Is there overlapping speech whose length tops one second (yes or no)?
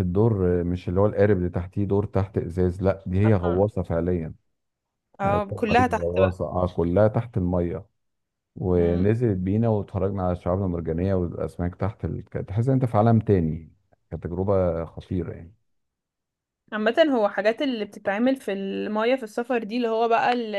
yes